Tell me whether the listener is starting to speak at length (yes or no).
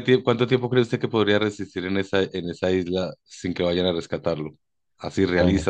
no